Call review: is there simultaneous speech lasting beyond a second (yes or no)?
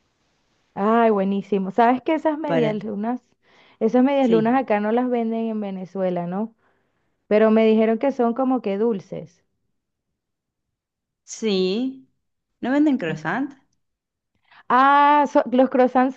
no